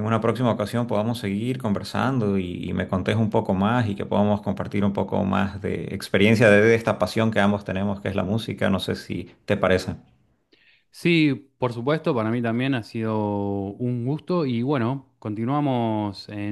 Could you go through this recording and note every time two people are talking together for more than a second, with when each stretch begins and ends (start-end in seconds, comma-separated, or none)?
none